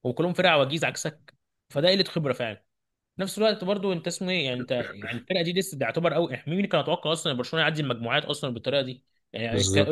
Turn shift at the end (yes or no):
yes